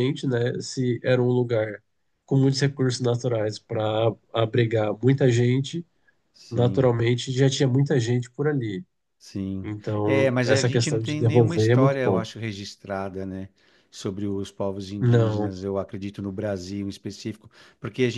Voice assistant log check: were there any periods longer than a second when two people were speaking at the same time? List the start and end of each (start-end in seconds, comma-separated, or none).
9.6-12.2